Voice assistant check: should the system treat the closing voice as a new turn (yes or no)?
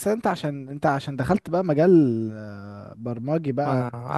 yes